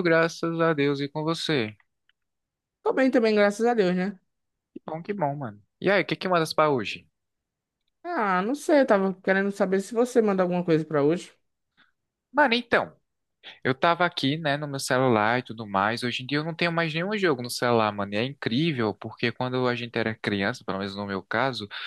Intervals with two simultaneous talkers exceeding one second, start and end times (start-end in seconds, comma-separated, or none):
none